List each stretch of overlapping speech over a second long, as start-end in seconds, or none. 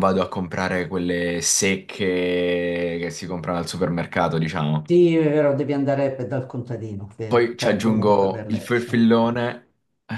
7.3-8.9